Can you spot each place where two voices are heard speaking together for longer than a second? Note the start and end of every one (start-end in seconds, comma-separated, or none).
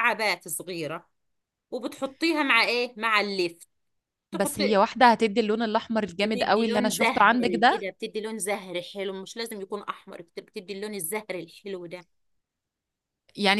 6.2-7.8